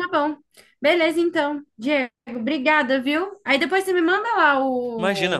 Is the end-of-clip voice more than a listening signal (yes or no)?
no